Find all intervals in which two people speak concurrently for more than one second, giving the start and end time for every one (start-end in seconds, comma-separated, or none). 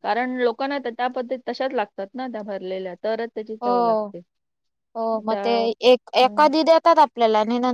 none